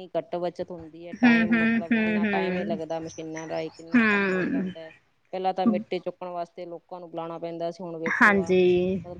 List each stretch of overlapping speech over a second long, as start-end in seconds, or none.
1.2-2.7